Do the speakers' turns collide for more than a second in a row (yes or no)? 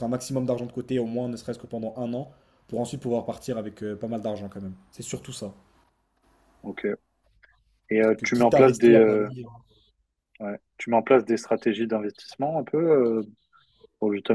yes